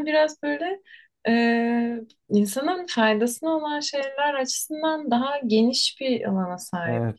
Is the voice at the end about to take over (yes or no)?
yes